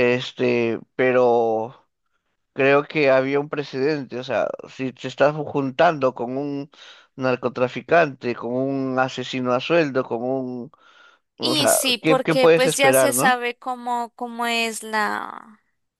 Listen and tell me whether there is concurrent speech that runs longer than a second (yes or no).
yes